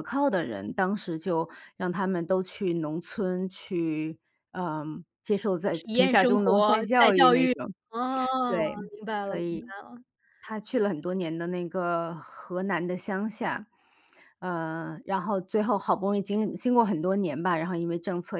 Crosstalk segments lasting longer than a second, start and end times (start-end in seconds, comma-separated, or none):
5.7-7.5